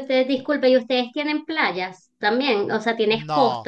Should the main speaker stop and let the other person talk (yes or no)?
yes